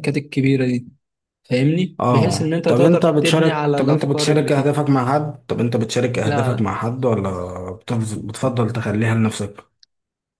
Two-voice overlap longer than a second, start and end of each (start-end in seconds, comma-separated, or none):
2.0-4.9